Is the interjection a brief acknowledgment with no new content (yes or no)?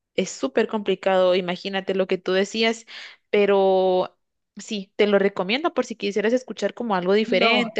no